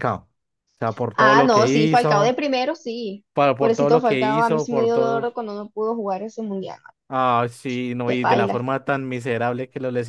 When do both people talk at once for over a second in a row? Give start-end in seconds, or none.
1.1-2.4, 3.3-5.4